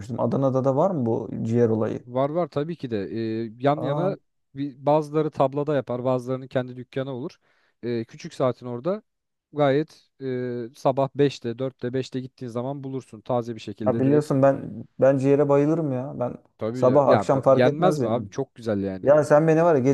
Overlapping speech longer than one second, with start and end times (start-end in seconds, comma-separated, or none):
16.7-18.3